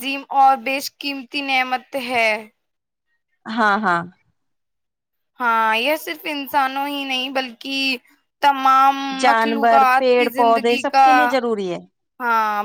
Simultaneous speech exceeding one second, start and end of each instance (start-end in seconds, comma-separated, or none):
9.2-11.1